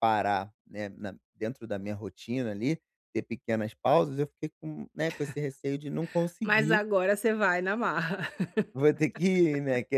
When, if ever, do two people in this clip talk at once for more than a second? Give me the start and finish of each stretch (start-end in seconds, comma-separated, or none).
none